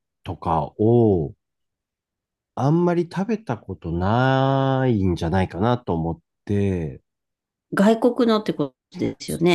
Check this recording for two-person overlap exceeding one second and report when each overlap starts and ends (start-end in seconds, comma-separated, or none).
none